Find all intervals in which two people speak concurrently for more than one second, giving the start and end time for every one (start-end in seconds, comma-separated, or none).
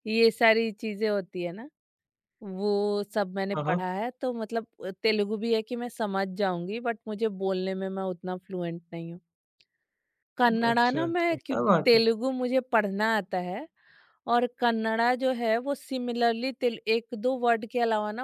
10.7-12.0